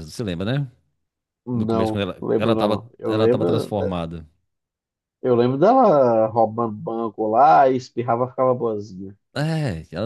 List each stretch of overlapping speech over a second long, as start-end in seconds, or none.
1.5-3.9